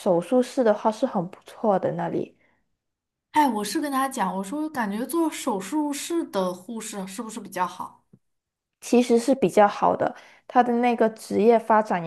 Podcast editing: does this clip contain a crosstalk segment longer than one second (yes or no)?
no